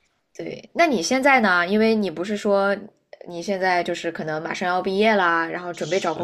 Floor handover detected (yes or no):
yes